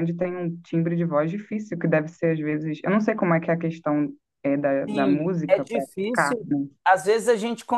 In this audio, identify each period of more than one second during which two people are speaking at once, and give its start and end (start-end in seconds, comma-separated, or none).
4.9-6.5